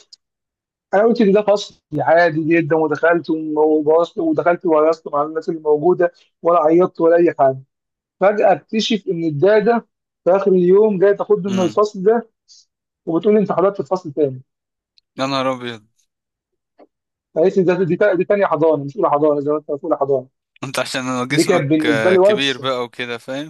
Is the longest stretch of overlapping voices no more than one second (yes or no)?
no